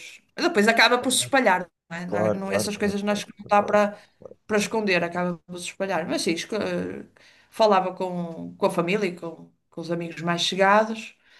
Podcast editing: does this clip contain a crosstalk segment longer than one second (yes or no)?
yes